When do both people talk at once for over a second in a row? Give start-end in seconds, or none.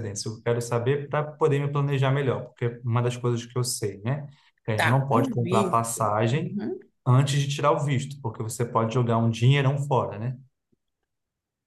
4.7-6.6